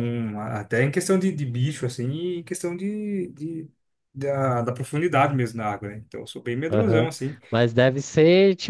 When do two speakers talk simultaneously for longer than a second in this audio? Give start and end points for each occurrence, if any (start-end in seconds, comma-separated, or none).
none